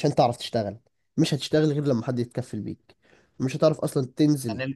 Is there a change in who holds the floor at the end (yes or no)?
no